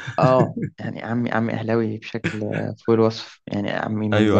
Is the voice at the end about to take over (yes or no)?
no